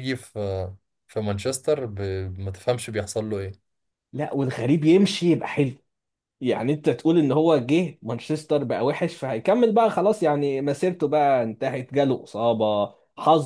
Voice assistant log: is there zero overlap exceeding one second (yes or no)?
yes